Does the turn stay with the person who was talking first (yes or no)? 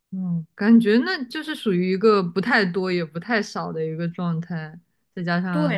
no